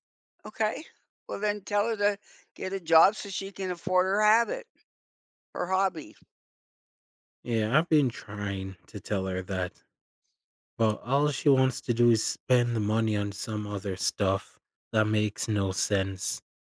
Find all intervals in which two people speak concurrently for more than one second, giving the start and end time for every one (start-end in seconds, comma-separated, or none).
none